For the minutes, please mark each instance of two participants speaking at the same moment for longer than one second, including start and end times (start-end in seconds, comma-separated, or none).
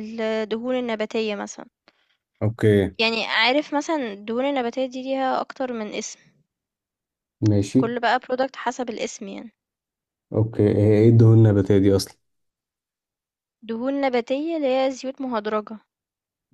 none